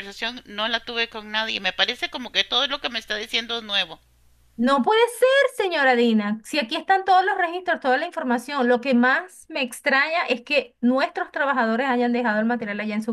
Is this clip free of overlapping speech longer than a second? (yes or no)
yes